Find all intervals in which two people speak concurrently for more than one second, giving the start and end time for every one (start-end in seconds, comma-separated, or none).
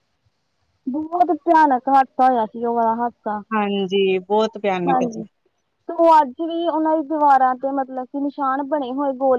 none